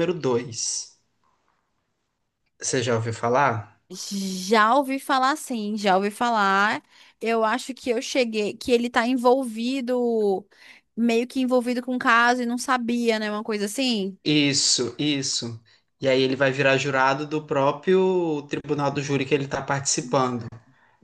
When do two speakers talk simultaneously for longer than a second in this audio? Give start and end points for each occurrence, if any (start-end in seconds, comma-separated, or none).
none